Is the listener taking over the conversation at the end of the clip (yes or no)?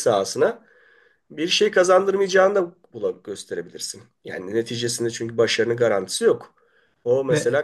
no